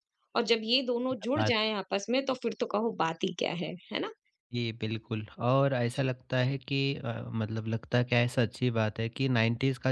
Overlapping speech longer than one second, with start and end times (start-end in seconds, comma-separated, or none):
none